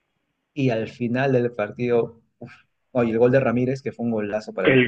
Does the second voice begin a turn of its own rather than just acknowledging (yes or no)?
yes